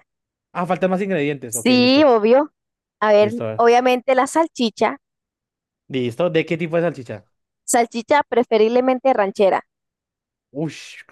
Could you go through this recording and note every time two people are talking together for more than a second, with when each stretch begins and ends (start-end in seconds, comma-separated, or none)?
none